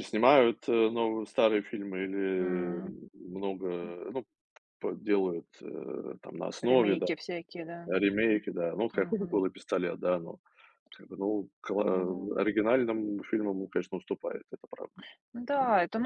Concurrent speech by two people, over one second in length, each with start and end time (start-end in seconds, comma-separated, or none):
none